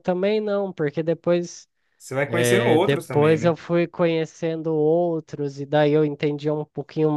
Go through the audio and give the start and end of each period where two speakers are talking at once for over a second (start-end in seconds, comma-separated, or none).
2.2-3.5